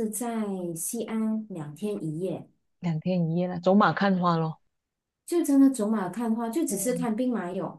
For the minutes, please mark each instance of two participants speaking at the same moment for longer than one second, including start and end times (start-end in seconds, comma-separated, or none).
none